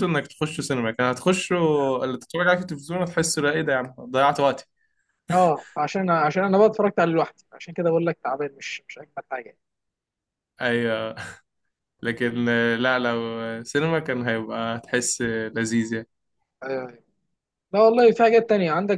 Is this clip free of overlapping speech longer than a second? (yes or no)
yes